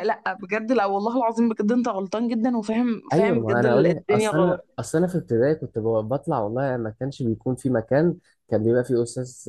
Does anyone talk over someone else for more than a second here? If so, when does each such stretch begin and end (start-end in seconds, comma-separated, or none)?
3.1-4.8